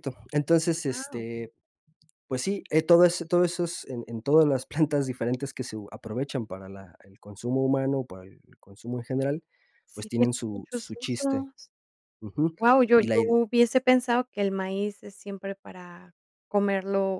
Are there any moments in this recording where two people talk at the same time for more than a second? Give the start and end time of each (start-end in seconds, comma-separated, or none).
9.9-11.4